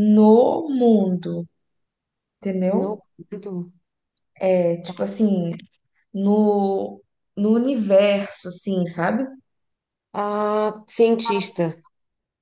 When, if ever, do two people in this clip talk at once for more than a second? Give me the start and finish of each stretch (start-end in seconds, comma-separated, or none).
none